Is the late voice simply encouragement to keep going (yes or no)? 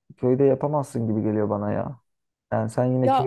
yes